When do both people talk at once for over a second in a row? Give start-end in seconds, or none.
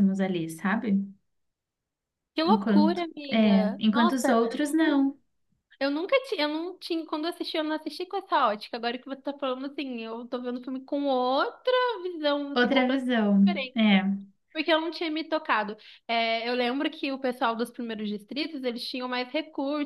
2.5-5.0, 12.5-14.0